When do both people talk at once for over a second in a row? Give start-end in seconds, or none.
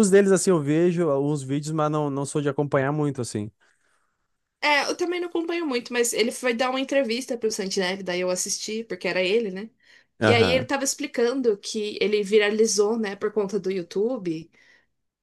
none